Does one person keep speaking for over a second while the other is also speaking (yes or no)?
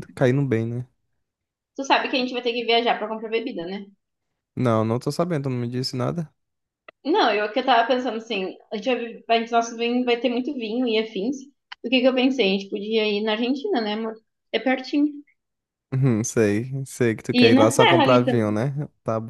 yes